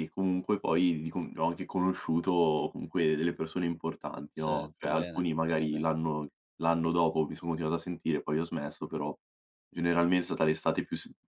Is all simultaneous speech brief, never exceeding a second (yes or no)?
no